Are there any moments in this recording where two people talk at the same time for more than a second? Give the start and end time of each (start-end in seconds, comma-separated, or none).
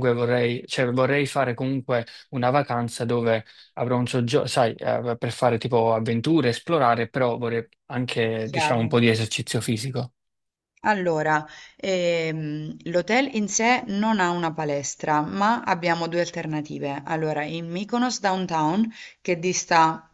none